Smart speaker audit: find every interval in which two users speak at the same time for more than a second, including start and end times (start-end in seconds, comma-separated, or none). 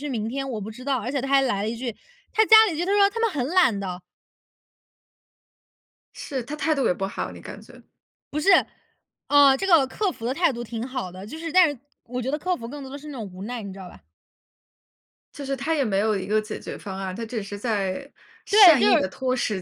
none